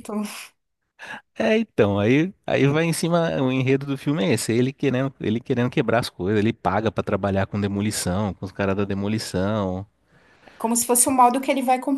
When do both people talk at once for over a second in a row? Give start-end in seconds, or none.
none